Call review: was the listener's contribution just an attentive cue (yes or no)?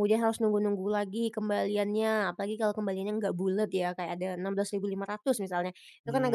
yes